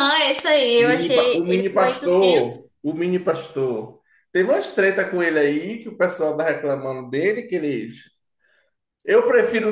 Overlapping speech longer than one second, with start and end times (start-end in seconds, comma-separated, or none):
0.8-2.6